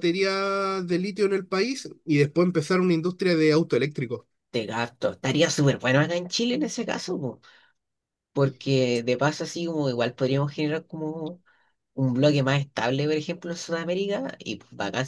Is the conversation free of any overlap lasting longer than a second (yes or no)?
yes